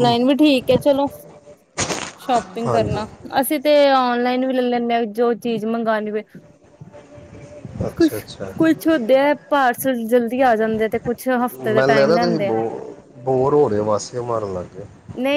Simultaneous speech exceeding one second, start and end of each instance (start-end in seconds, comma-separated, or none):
none